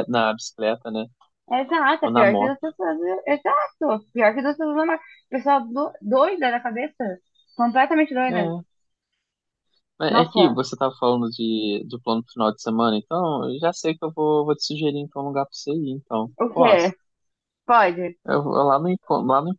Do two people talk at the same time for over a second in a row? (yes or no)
no